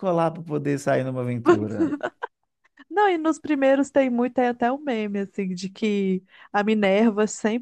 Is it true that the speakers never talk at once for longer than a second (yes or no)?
yes